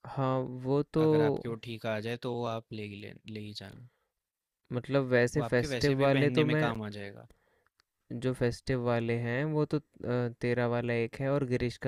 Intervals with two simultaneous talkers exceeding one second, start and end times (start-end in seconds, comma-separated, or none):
5.3-6.7